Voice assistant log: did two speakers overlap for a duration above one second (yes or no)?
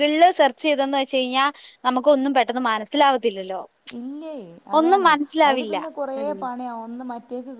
no